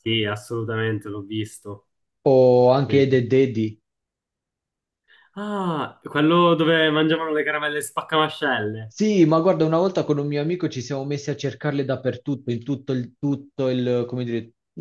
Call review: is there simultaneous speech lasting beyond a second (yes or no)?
no